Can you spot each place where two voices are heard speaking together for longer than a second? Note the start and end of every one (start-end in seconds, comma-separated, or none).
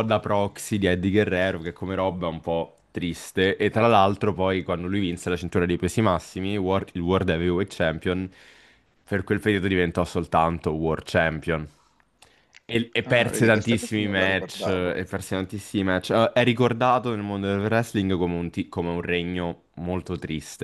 13.0-15.0